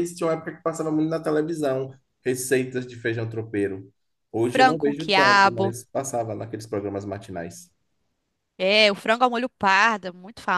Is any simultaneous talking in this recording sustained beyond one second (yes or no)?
yes